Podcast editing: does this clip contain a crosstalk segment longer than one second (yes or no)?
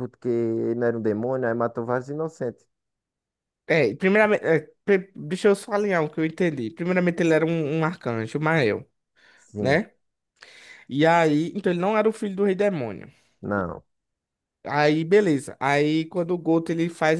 no